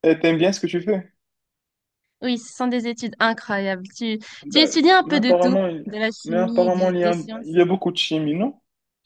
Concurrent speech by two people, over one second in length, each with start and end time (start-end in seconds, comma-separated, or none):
4.4-7.6